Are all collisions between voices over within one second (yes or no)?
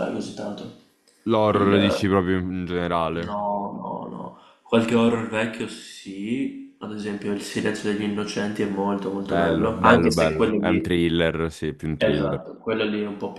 no